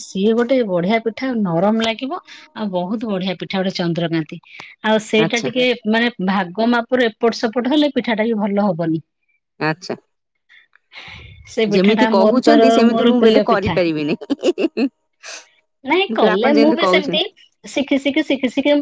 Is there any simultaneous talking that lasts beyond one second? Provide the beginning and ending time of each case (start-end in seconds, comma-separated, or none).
11.7-13.7